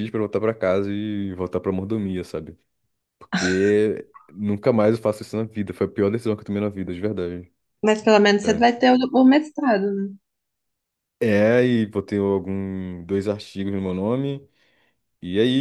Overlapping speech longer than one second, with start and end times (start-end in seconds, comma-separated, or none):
none